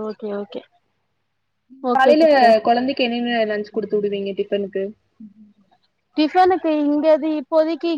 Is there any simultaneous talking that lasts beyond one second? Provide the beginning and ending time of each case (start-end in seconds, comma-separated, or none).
none